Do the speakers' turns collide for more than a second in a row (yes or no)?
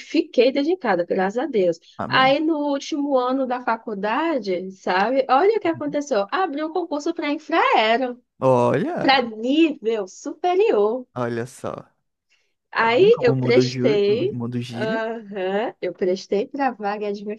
yes